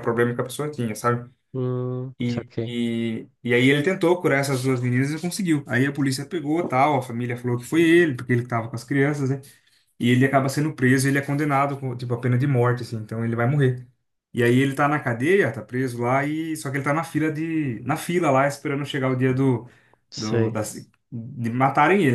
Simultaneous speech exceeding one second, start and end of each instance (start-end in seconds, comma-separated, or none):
none